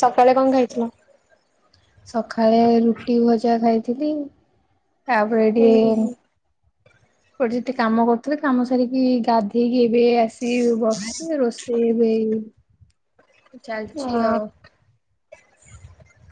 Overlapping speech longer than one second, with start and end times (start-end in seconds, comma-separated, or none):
none